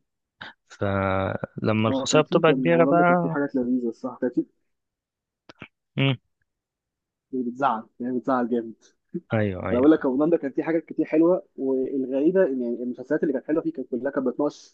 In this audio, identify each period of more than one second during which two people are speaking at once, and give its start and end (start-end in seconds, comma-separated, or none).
1.9-3.4